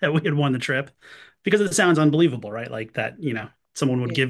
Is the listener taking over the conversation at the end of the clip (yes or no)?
no